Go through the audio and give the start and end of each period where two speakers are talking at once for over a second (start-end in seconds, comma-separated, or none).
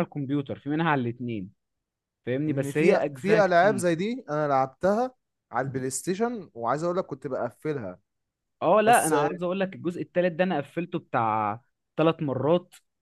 2.5-3.9